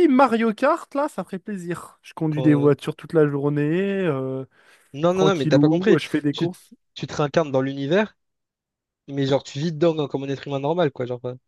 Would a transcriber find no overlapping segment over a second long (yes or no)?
no